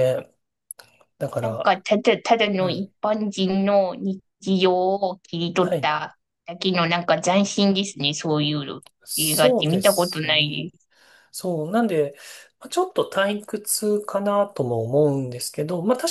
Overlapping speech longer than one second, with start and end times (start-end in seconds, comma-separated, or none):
9.1-10.7